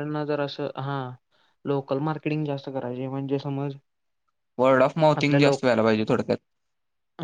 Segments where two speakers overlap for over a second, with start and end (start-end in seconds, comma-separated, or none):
none